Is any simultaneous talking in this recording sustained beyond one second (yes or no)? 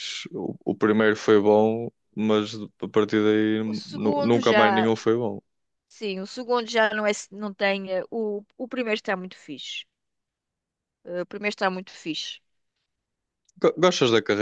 yes